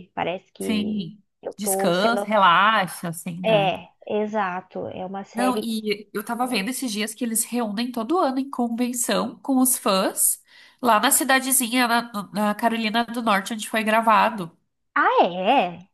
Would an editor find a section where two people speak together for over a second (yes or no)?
yes